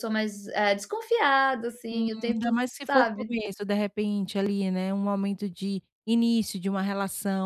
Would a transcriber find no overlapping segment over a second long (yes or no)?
no